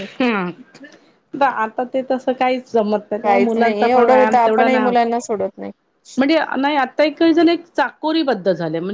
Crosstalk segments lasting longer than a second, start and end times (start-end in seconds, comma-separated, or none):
3.2-5.0